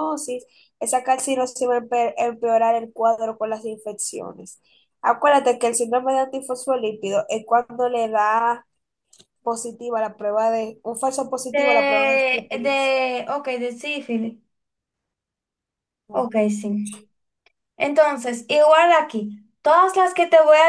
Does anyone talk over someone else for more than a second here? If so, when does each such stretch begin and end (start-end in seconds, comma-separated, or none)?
11.5-13.0